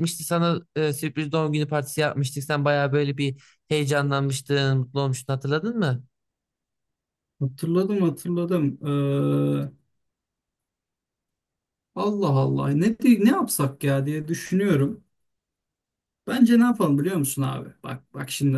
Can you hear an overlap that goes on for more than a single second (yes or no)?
no